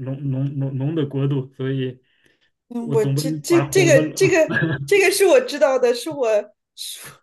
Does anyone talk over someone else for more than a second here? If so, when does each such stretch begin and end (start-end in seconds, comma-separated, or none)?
2.8-4.3